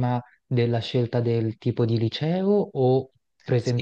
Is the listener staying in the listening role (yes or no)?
no